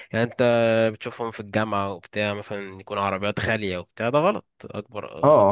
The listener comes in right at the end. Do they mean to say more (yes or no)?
yes